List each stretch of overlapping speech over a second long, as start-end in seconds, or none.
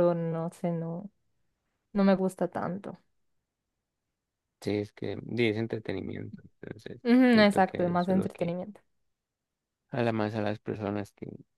7.0-8.6